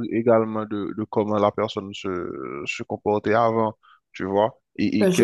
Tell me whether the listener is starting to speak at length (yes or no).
yes